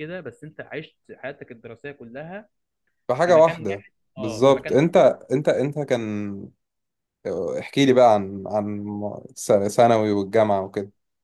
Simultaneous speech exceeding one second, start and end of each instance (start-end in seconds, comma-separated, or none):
3.2-5.0